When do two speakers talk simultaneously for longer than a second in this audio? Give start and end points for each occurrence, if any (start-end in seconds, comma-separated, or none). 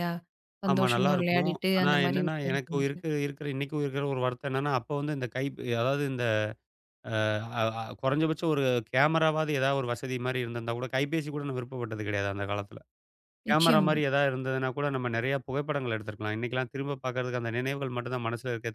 0.7-2.9